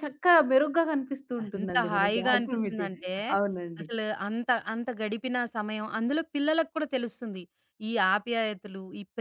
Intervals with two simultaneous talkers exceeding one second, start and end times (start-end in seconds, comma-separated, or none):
1.6-3.0